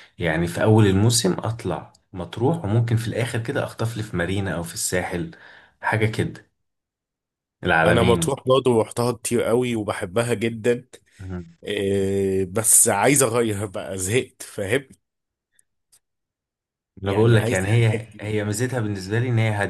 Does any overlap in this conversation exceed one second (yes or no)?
yes